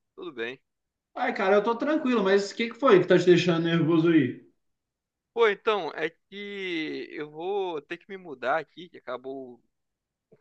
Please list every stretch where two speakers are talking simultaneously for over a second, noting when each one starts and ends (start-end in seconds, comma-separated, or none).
none